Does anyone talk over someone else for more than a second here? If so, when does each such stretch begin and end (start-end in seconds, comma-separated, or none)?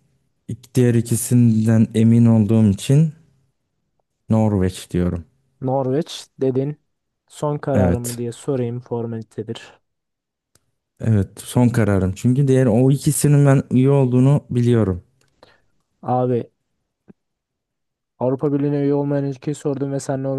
none